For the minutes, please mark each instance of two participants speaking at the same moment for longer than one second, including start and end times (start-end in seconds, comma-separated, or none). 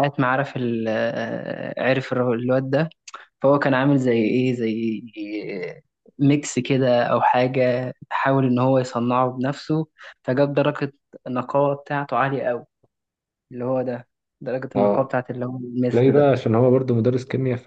none